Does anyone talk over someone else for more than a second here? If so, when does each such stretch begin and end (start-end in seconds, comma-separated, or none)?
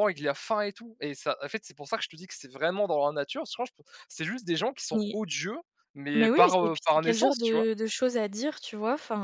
6.1-7.7